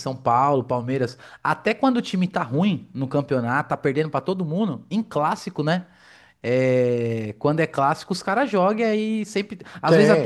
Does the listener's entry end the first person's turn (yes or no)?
no